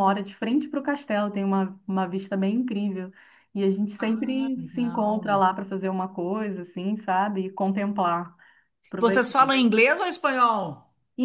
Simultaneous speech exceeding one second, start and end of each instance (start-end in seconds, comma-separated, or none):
4.0-5.4